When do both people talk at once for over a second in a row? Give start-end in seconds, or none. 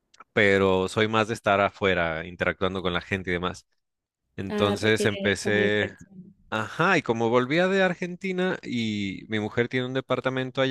4.5-6.0